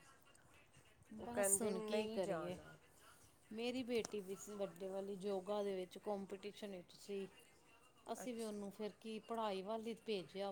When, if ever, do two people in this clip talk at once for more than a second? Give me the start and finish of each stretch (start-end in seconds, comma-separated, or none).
1.2-2.5